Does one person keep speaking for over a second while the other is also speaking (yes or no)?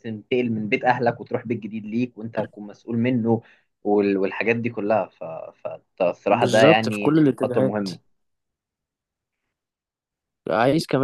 yes